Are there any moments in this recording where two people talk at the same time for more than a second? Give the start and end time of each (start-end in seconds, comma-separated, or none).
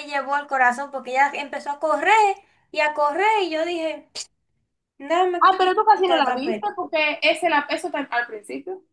5.4-6.9